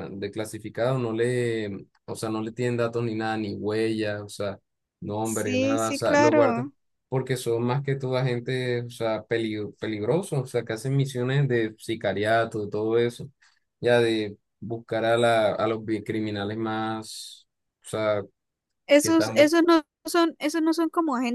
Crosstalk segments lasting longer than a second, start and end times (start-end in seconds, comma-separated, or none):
5.2-6.7